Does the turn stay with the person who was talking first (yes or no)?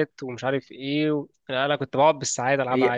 no